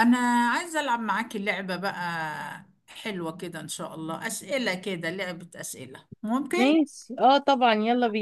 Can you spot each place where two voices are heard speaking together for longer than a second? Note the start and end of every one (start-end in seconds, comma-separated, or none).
none